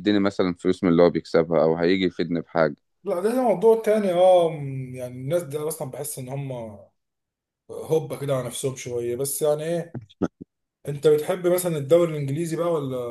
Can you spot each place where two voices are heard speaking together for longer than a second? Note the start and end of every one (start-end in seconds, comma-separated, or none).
none